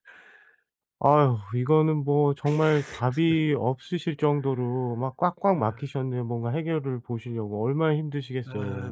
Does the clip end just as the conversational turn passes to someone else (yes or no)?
yes